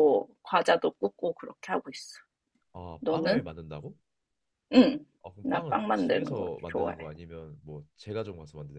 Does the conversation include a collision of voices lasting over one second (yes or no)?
yes